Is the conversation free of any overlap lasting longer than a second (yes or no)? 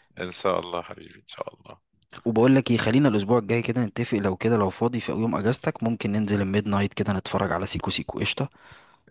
yes